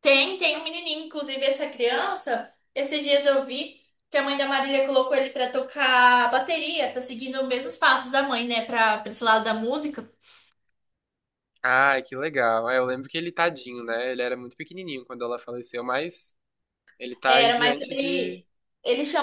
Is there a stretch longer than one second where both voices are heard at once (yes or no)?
yes